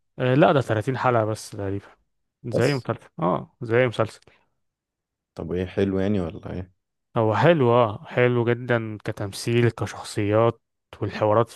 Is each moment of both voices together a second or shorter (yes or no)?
yes